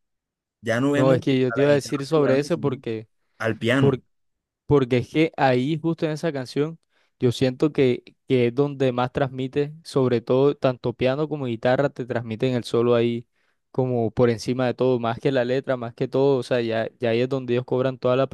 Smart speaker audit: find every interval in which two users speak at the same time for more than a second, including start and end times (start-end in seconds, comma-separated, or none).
0.9-2.8